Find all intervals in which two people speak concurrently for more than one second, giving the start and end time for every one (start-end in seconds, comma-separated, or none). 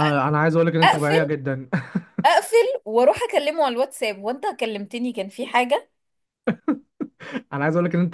none